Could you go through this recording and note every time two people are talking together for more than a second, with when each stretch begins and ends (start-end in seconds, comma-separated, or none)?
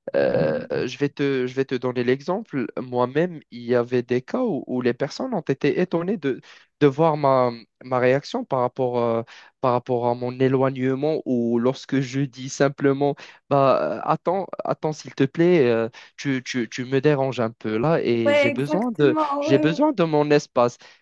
18.2-19.9